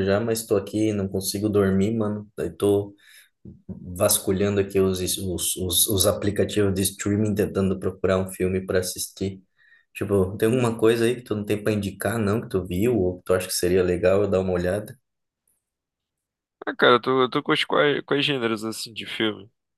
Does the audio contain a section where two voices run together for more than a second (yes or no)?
no